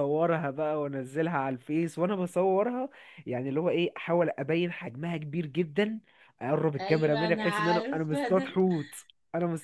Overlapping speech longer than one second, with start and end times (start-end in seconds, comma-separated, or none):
6.8-8.6